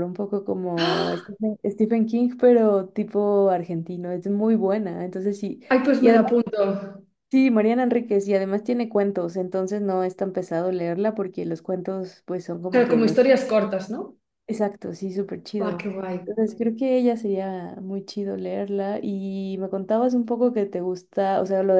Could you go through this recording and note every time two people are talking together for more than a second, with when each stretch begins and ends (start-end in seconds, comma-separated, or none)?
none